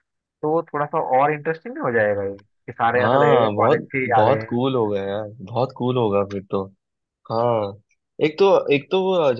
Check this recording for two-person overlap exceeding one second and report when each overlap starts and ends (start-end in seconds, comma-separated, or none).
3.0-4.6